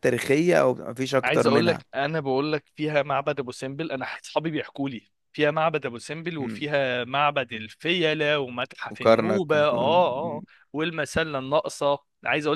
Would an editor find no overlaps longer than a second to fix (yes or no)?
no